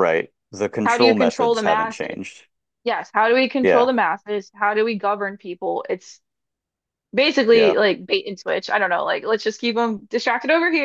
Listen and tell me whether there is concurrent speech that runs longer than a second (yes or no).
yes